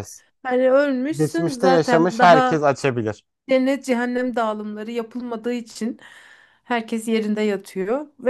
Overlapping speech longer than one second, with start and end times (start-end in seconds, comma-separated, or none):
1.1-2.6